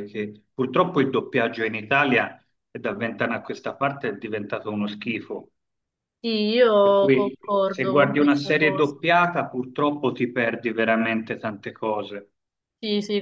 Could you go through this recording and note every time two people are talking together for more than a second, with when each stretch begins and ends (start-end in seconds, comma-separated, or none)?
6.8-9.0